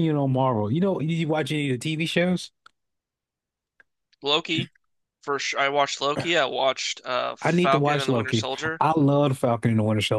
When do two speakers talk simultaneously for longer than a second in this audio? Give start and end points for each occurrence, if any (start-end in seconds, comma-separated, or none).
7.4-8.8